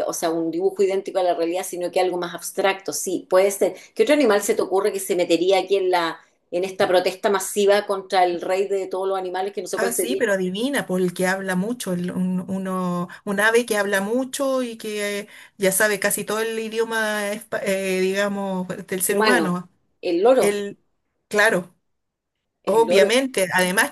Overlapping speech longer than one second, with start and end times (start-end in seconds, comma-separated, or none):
none